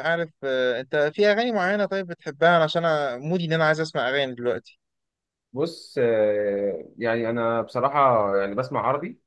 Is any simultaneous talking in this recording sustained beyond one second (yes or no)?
no